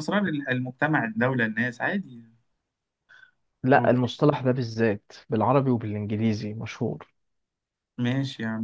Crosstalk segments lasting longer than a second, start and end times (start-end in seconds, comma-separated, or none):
none